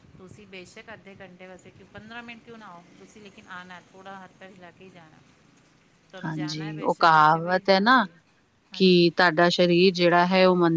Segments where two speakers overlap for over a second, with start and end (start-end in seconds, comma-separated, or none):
6.2-8.1